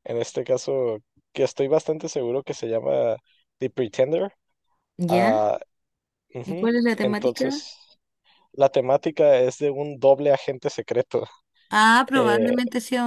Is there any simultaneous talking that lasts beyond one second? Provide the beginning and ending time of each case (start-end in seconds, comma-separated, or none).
6.4-7.7